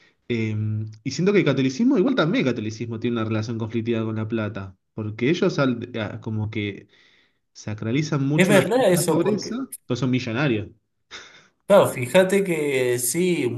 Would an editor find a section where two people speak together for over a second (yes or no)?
yes